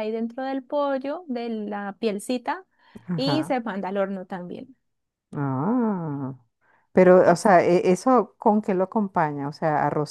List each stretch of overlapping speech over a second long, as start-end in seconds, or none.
none